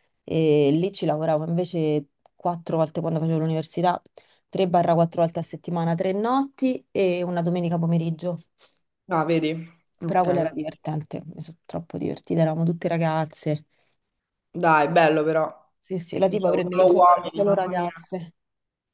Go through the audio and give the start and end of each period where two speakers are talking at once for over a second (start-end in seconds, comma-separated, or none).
16.2-17.9